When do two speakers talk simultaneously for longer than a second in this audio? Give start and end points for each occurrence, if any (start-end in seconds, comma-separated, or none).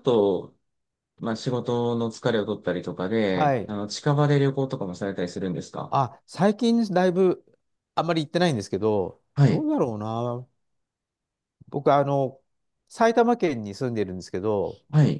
none